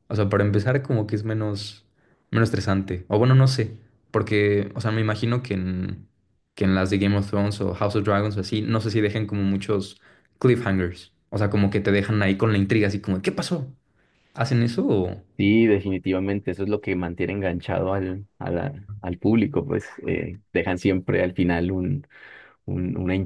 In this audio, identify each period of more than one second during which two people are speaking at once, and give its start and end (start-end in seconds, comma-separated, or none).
none